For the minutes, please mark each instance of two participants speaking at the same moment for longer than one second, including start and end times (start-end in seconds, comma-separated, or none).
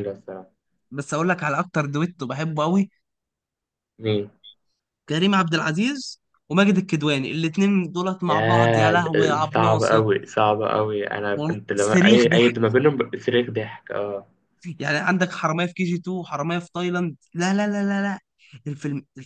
8.3-10.0, 11.3-12.6